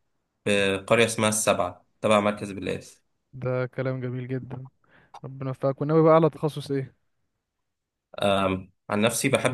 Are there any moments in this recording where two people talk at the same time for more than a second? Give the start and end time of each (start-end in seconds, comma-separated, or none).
none